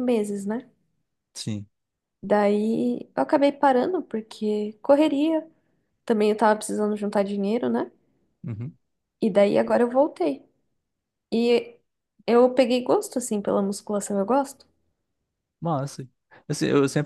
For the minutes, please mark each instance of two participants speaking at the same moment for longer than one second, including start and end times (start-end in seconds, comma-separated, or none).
none